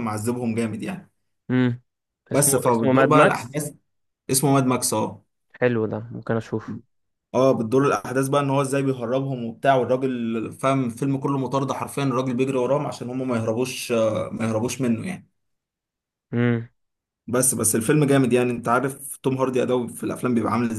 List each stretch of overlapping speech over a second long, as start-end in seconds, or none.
2.3-3.6